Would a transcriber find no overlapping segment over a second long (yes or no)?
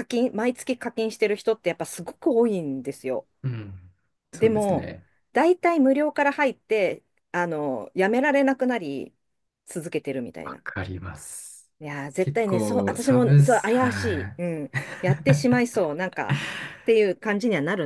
no